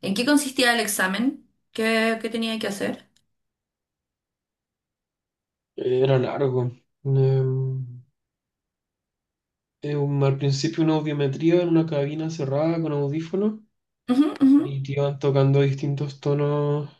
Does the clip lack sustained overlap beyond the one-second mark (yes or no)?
yes